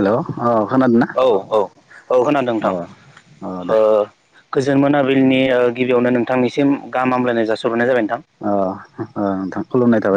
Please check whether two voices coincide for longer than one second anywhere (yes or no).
no